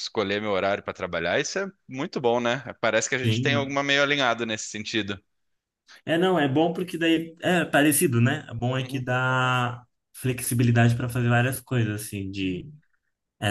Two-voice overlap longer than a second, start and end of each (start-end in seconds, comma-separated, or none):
none